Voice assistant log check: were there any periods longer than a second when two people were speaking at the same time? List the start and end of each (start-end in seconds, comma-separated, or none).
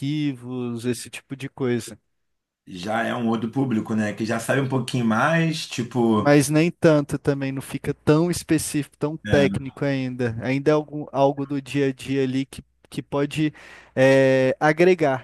none